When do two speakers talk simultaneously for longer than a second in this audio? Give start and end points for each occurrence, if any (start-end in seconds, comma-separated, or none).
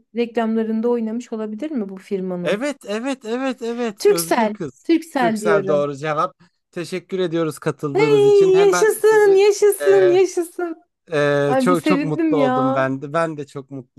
4.0-5.9, 7.9-10.2, 11.5-12.8